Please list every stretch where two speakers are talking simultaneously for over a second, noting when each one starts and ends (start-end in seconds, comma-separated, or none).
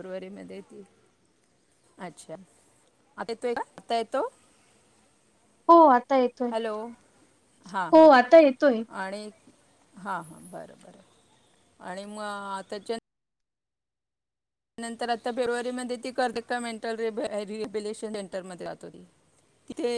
none